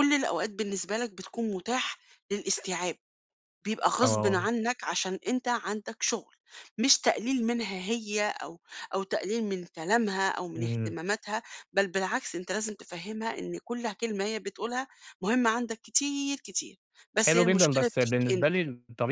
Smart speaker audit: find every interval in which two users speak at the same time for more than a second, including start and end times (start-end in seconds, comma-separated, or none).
17.2-18.6